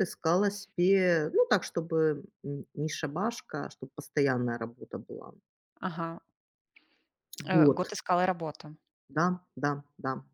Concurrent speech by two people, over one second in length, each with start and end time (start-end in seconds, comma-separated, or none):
none